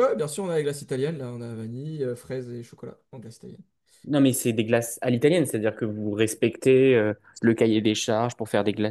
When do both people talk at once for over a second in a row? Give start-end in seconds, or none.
none